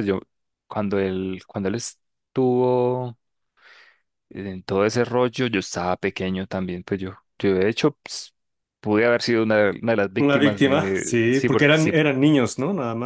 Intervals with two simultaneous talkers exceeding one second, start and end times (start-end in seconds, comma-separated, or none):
10.2-11.9